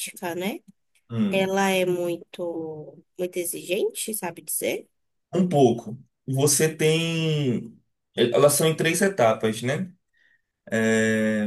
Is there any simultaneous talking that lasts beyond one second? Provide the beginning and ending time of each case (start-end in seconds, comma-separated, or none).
none